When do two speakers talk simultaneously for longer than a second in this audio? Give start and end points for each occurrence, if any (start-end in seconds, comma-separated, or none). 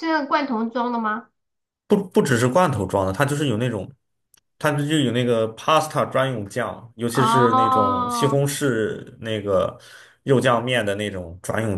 7.1-8.4